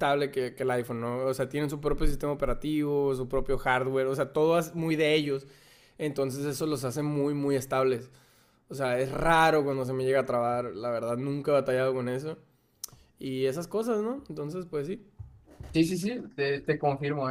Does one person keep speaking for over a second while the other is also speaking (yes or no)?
no